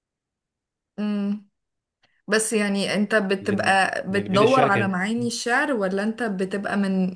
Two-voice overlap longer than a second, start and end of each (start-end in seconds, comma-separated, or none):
3.4-5.0